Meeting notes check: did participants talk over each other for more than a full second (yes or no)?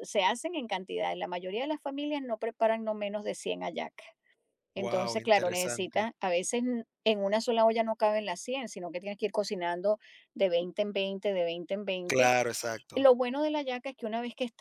yes